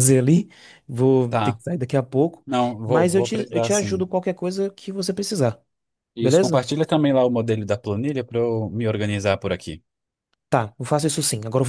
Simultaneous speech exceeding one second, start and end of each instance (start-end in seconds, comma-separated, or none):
2.8-4.0